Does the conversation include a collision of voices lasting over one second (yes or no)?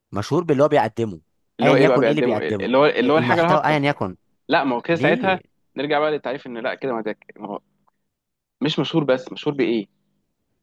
yes